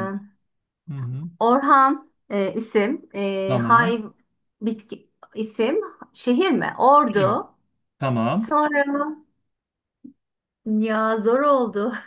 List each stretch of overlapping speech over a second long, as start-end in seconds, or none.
none